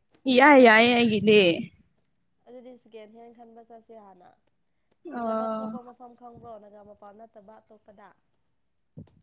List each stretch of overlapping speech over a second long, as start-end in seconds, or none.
none